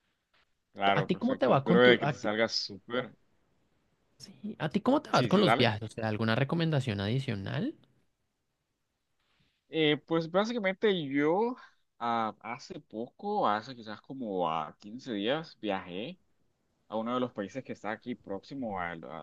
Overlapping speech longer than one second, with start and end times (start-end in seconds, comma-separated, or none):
0.9-2.3